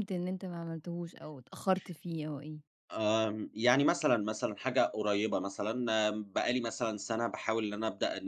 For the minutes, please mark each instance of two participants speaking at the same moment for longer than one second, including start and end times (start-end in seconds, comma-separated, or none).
none